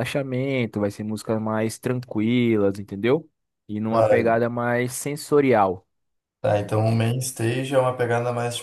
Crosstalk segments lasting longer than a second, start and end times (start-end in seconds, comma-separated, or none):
none